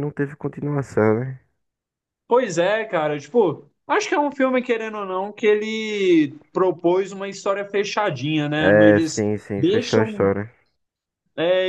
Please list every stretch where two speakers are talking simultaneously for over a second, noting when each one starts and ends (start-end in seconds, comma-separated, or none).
8.6-10.3